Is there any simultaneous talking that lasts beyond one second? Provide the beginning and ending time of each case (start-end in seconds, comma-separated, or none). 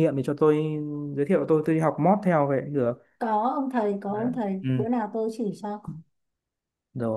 none